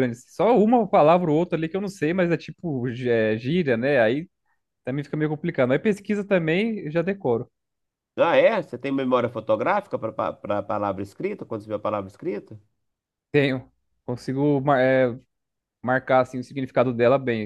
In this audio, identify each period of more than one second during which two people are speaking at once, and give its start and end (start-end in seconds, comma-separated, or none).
none